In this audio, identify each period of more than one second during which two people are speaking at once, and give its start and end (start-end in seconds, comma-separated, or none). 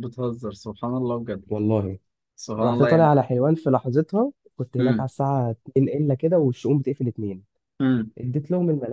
none